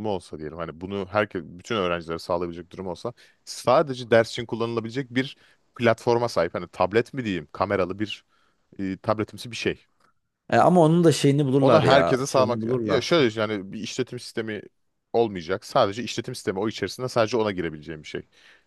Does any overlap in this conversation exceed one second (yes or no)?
yes